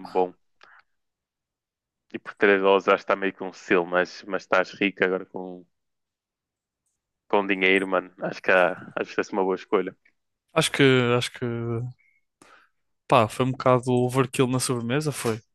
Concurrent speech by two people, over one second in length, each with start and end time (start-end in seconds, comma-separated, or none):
none